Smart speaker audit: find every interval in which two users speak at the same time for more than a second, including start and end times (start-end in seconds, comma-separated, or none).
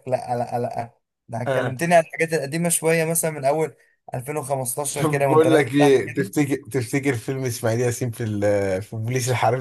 4.9-6.3